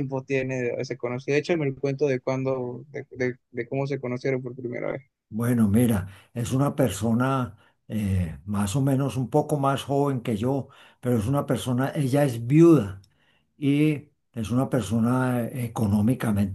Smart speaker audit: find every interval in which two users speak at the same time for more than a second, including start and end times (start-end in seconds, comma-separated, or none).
none